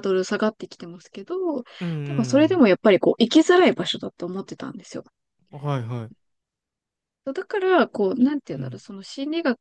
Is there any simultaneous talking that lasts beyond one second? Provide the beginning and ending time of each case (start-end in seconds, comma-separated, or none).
none